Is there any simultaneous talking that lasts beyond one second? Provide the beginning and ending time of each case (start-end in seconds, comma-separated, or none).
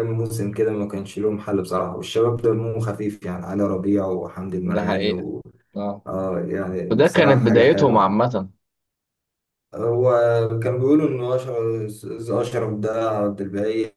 6.9-8.2